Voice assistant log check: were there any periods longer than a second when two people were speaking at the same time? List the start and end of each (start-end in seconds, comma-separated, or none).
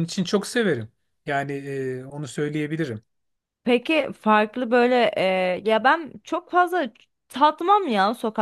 none